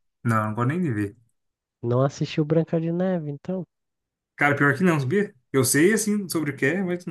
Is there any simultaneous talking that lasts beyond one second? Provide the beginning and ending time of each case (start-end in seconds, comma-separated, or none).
none